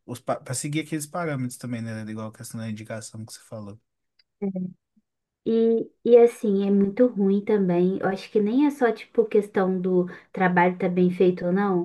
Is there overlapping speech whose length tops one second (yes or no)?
no